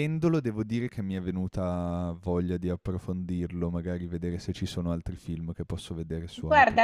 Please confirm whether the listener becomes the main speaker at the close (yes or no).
yes